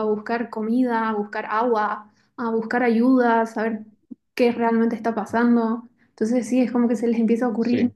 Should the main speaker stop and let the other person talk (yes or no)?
no